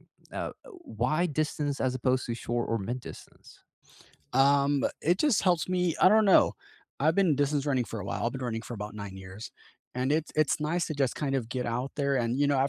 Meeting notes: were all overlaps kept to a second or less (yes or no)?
yes